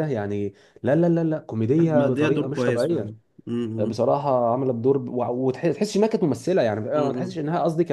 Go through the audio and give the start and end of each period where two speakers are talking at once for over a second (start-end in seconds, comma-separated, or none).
1.8-3.1